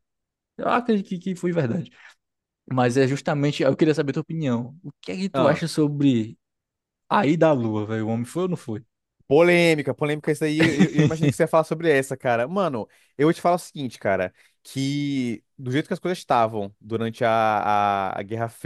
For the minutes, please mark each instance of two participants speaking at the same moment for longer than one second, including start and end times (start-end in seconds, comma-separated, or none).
none